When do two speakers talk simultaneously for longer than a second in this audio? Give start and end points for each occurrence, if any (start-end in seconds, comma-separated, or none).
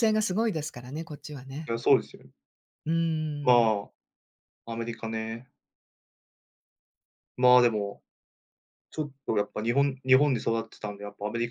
none